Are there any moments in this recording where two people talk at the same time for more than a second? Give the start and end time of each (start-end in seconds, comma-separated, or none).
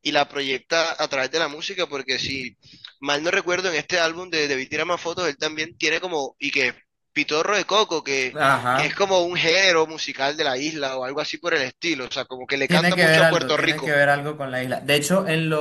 12.7-14.0